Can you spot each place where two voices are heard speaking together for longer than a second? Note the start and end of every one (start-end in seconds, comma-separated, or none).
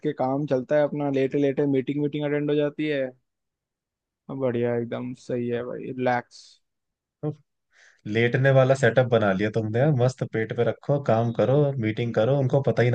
none